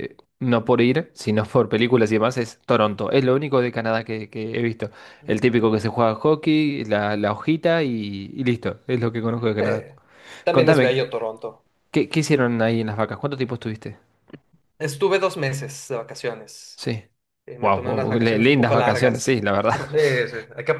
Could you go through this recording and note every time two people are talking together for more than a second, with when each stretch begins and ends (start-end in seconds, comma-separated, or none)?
17.6-19.8